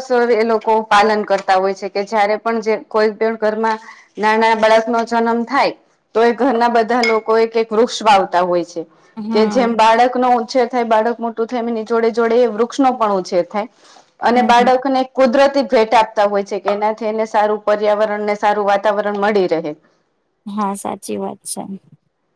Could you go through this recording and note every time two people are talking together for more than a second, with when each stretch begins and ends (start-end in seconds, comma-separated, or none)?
none